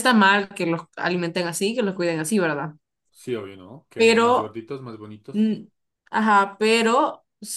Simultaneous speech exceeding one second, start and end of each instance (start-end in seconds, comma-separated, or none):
none